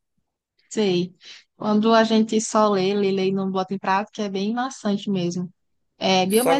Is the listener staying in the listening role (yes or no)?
yes